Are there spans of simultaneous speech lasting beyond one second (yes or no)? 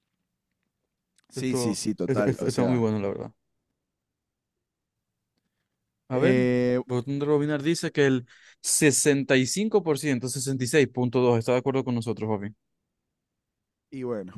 yes